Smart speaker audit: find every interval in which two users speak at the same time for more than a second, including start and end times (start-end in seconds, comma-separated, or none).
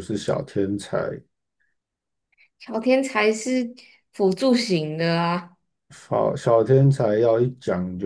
none